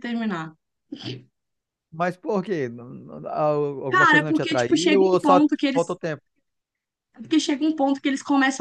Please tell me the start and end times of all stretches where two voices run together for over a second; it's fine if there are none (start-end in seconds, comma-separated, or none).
3.9-6.0